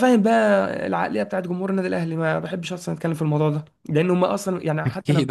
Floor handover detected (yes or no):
no